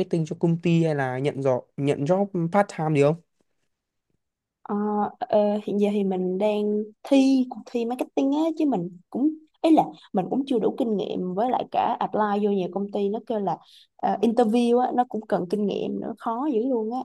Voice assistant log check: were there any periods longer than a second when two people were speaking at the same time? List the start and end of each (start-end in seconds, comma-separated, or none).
none